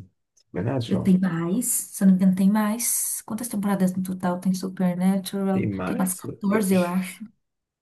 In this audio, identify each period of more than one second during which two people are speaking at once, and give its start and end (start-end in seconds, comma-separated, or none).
5.5-6.9